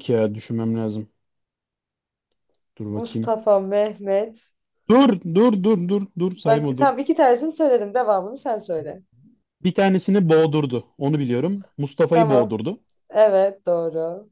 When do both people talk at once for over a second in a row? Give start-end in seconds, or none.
none